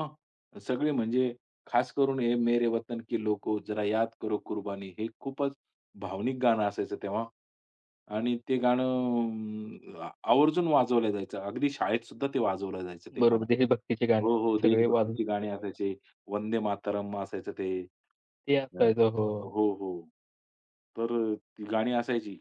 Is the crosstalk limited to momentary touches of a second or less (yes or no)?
no